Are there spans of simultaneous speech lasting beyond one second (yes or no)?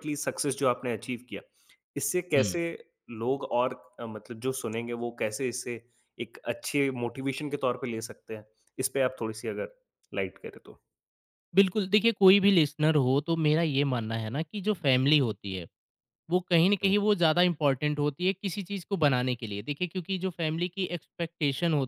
no